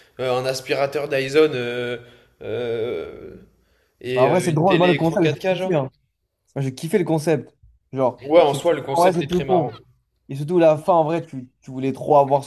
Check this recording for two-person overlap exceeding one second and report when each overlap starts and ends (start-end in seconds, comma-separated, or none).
4.1-5.7, 8.3-9.7